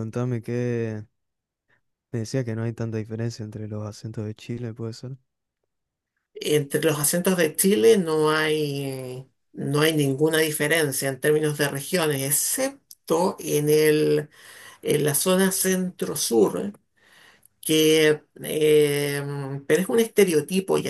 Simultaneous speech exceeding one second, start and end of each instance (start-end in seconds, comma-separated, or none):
none